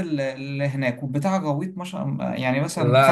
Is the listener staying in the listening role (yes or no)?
no